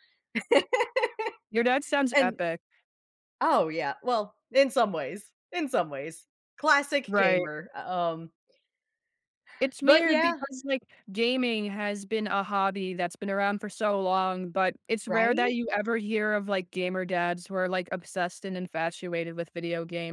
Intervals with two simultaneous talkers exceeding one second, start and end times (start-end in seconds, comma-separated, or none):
none